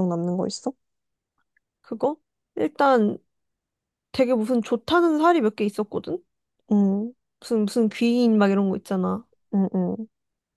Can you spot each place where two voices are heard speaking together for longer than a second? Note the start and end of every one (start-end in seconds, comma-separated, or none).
none